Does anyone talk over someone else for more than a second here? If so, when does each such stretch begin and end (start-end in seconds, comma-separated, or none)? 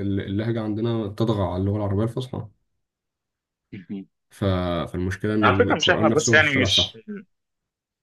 5.4-6.9